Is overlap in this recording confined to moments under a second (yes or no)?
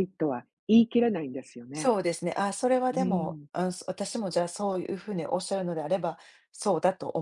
yes